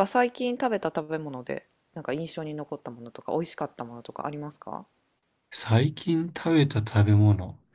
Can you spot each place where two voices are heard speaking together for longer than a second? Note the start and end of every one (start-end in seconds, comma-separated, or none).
none